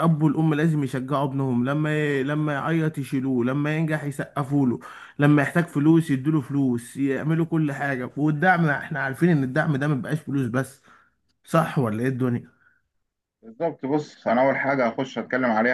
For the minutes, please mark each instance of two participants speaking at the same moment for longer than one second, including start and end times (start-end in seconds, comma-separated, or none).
none